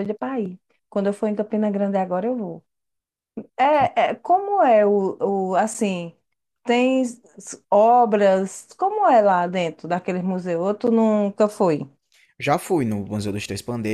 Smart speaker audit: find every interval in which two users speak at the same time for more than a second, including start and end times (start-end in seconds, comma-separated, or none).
none